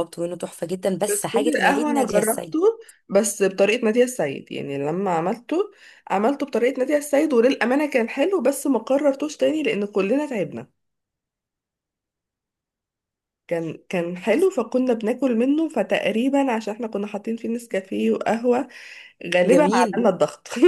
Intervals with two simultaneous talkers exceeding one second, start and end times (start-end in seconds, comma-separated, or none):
1.1-2.6